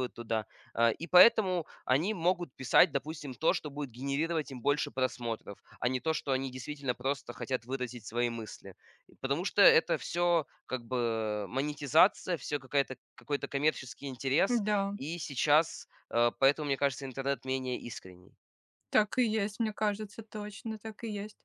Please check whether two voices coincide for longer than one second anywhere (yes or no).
no